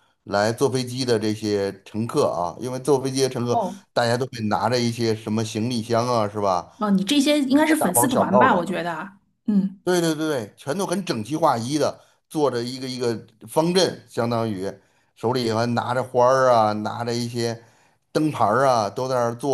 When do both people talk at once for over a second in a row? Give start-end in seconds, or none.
7.5-8.7